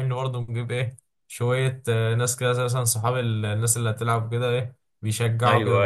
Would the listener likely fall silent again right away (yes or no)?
no